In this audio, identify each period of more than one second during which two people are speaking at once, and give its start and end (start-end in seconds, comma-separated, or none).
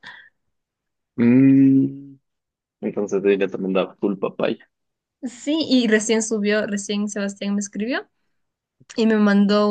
none